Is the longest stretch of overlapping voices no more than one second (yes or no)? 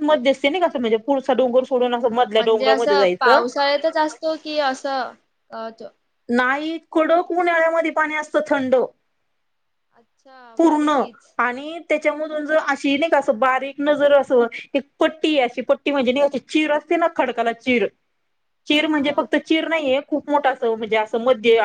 yes